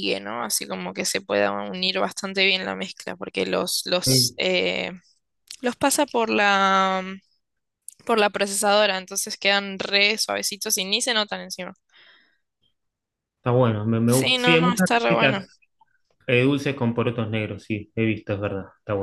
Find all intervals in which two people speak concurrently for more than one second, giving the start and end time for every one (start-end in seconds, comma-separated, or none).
14.0-15.4